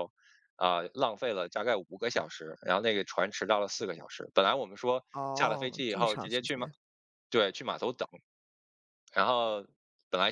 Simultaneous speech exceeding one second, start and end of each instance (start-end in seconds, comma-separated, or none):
5.1-6.7